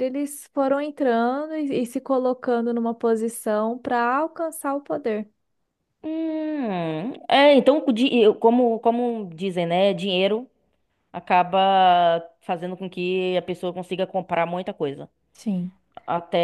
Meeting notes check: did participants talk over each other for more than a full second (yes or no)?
no